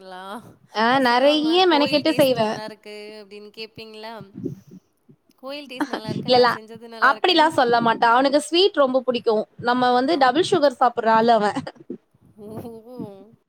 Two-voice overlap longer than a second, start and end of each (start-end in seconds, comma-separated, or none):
0.9-2.5